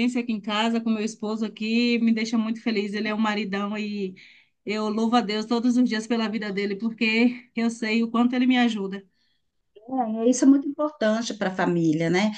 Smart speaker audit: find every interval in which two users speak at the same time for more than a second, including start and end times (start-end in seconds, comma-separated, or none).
none